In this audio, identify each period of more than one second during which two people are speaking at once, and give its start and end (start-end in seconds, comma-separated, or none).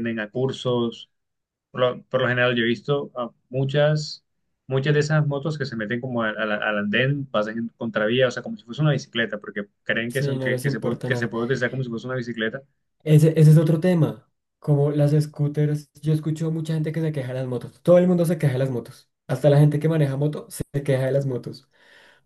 10.1-11.3